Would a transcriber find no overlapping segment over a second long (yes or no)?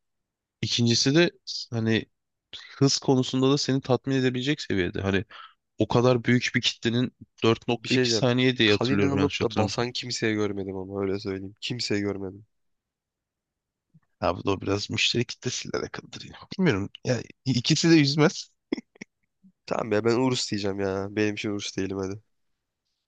no